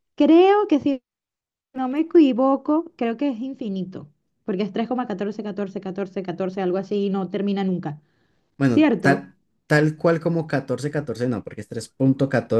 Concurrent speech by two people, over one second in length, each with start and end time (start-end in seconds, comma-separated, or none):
none